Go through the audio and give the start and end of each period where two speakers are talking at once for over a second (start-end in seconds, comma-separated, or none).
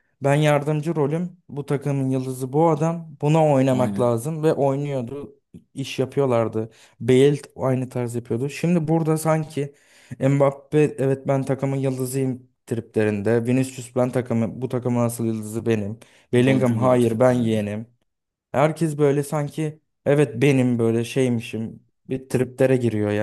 16.3-17.7